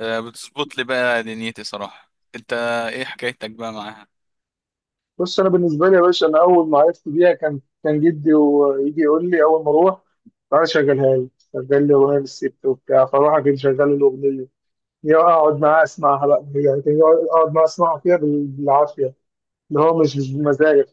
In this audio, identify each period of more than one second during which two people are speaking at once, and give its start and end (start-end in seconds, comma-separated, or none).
none